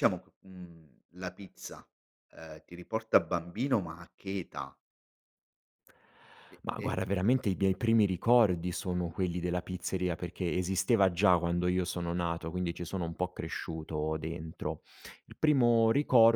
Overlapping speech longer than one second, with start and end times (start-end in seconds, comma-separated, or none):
none